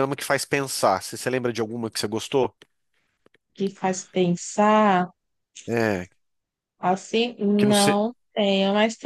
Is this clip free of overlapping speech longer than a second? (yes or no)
yes